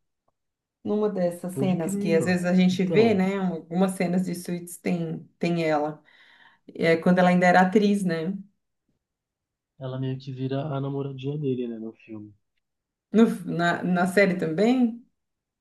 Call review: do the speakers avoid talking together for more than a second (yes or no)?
no